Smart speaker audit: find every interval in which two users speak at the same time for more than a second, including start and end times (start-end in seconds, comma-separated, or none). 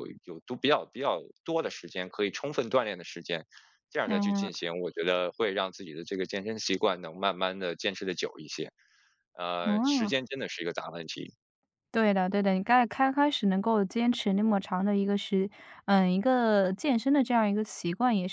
none